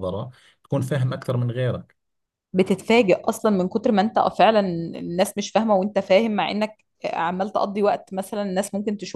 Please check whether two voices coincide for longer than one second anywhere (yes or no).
no